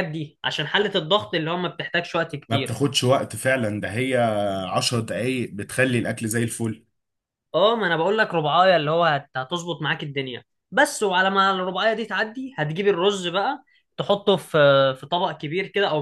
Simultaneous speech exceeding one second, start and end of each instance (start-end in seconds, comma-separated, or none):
none